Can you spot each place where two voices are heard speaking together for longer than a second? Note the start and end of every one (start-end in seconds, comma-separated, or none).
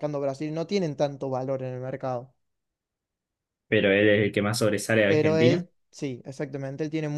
none